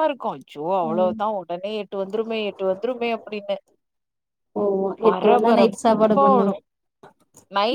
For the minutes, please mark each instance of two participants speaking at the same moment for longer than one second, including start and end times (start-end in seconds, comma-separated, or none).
5.0-6.5